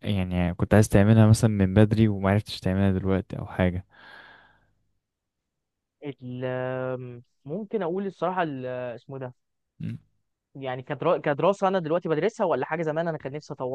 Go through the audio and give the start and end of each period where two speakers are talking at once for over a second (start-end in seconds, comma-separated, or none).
none